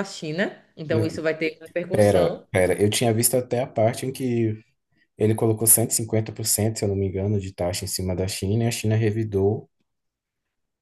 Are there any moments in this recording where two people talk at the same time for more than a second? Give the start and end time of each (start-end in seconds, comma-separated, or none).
none